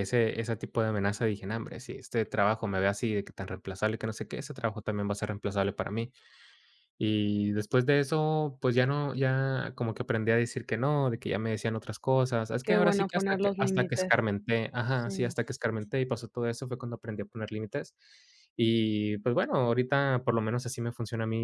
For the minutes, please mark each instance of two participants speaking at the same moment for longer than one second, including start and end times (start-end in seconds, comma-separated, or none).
12.6-14.2